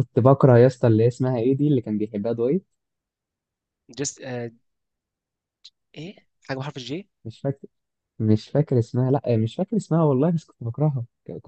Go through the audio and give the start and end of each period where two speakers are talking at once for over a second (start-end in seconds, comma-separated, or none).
none